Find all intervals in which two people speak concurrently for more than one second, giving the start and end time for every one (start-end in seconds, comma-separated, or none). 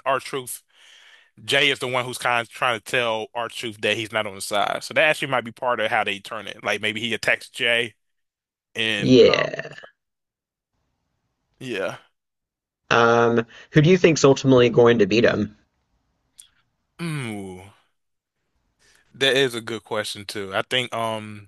none